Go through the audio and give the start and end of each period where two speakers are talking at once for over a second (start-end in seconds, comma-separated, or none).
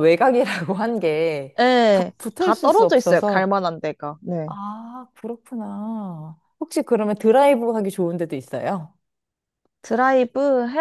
1.9-3.5